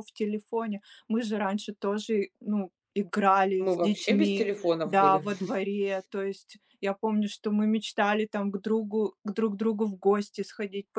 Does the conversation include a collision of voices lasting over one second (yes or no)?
yes